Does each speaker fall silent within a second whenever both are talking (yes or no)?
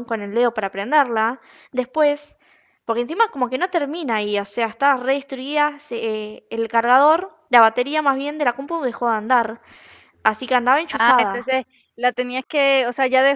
yes